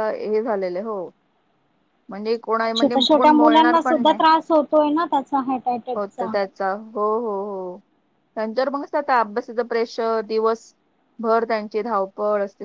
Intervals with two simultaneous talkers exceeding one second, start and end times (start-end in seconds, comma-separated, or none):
2.8-4.2